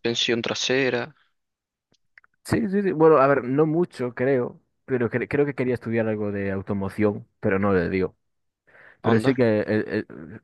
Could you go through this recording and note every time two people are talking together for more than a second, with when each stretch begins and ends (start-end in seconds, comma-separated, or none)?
none